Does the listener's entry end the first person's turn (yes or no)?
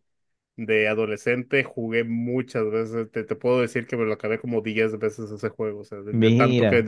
no